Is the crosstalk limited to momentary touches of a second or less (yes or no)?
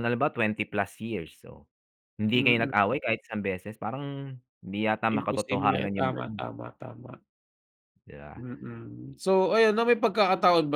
no